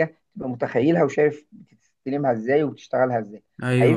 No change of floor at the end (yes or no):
no